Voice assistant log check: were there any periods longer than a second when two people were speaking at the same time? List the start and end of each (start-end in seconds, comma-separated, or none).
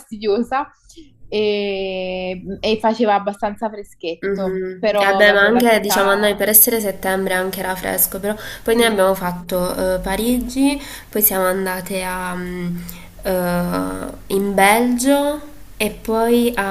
4.2-6.4